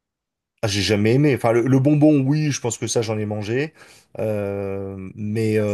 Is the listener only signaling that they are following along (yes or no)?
yes